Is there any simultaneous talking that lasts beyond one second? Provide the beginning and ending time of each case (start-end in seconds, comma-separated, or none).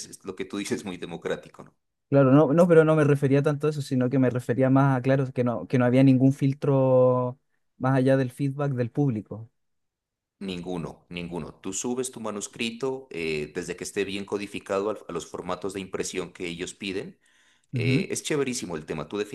none